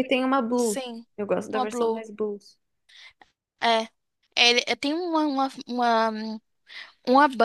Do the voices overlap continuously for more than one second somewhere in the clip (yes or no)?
no